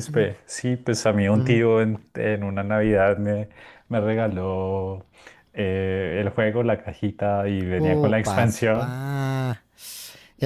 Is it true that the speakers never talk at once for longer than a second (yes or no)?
no